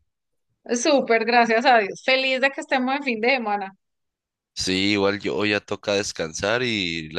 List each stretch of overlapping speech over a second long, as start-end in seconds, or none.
none